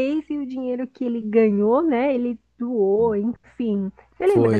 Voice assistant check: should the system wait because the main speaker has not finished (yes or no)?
no